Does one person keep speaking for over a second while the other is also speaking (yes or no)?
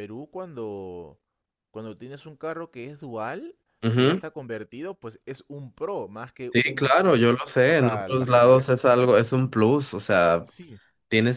yes